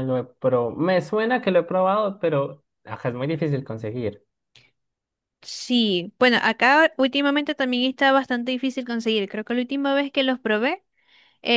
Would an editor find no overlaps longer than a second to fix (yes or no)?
yes